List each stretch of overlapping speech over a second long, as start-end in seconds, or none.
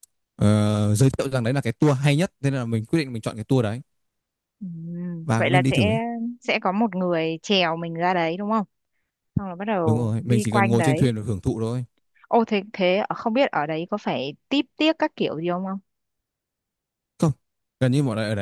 9.8-11.1